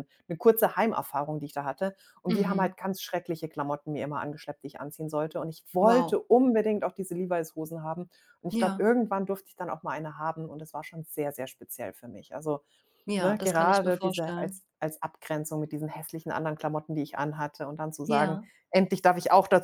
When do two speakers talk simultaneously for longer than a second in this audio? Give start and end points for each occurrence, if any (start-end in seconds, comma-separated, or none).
13.2-14.6